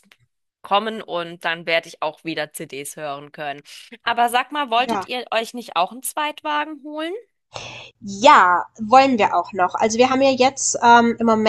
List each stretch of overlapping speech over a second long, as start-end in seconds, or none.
none